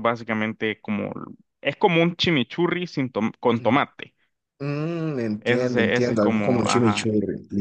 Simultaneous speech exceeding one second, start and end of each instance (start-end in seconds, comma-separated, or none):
5.4-7.1